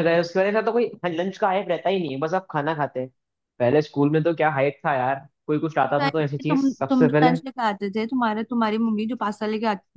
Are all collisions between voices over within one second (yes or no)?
no